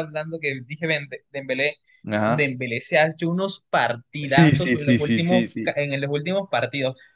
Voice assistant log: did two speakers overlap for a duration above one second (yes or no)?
yes